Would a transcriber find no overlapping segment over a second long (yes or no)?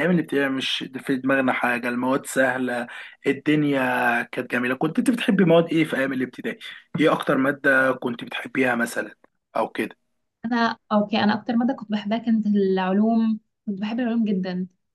yes